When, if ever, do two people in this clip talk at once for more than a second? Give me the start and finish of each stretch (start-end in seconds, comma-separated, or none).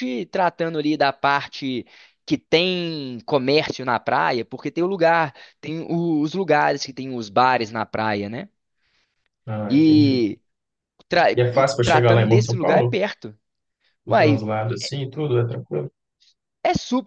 11.3-13.0